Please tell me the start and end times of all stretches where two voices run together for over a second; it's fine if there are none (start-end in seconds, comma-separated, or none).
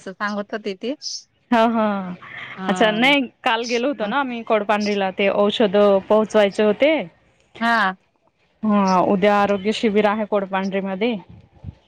none